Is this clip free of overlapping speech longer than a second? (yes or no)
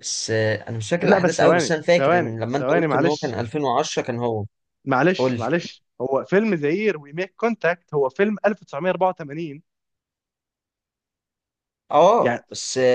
no